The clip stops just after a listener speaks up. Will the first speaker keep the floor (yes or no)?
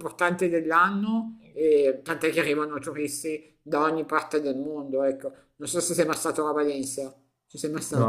no